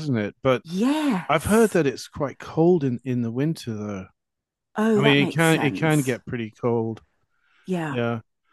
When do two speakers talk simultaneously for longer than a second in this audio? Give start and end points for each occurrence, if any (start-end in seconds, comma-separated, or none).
5.0-6.2